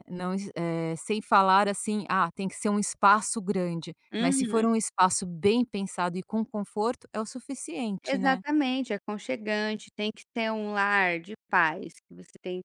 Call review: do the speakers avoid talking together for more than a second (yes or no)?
yes